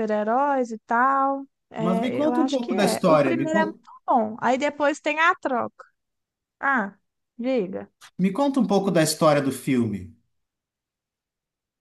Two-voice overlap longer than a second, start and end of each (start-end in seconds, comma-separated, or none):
1.8-3.8